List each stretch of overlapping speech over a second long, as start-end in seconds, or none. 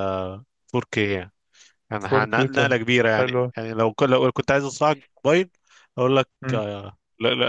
2.0-3.5